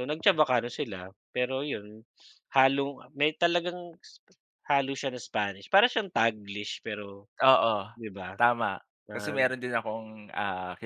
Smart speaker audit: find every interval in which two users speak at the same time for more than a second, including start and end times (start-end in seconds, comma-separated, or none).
none